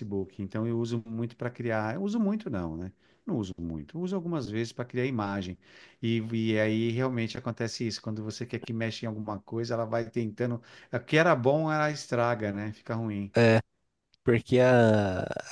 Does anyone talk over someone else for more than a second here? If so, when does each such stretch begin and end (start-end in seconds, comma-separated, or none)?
none